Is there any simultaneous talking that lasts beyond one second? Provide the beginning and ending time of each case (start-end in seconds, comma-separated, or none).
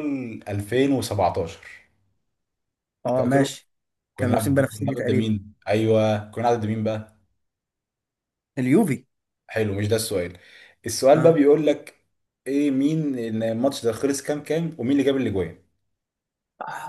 4.2-5.4